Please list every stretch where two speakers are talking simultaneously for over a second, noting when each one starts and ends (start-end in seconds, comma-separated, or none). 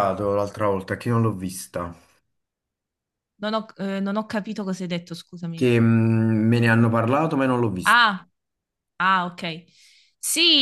none